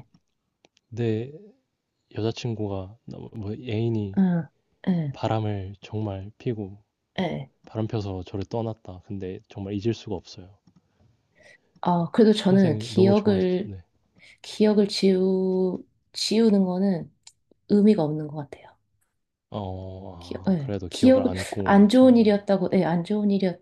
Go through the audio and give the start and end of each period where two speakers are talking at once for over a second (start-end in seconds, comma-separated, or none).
12.5-13.7, 20.5-22.4